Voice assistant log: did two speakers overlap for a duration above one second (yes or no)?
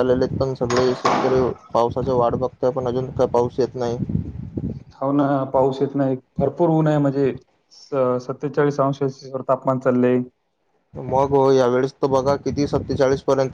no